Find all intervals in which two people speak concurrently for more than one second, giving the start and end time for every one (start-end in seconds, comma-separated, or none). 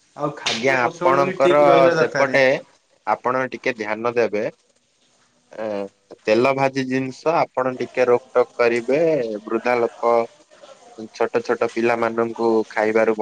0.5-2.4